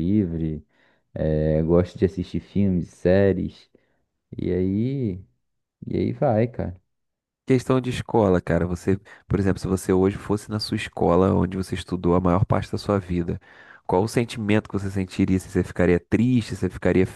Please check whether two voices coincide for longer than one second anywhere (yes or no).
no